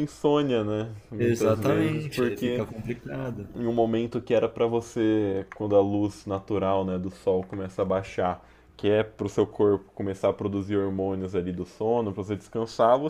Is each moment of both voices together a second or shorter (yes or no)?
no